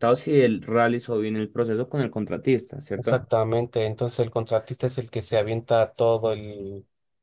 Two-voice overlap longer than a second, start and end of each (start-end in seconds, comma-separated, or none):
none